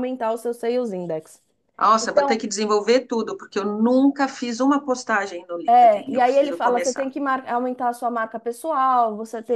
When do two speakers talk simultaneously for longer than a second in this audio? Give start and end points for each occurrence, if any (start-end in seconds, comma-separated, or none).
5.7-7.1